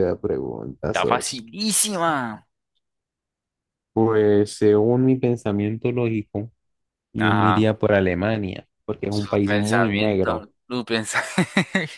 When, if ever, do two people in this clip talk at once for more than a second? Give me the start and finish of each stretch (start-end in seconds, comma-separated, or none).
9.1-10.4